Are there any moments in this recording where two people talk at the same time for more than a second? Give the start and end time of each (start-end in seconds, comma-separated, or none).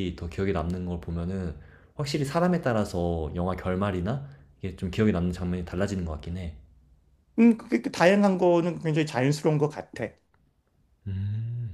none